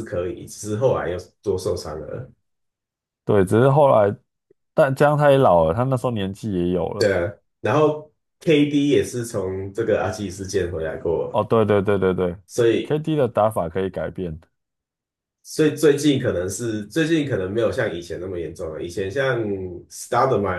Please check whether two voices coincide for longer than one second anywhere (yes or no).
no